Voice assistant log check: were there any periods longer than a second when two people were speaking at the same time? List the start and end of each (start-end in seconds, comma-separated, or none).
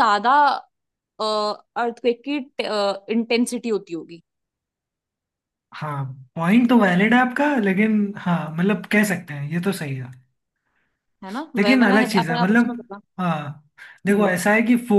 11.6-13.0